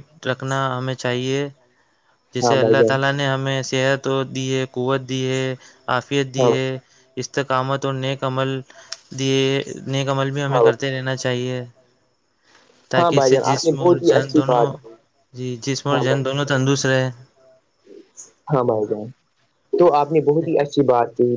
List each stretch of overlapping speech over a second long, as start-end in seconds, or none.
13.0-14.7